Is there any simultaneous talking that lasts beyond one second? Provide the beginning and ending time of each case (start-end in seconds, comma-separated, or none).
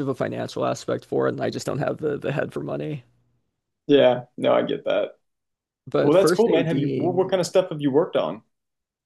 6.0-7.3